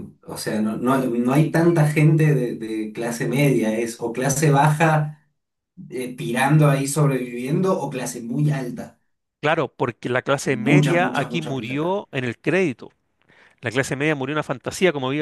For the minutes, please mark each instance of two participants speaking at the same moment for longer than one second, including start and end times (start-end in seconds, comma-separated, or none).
10.4-12.0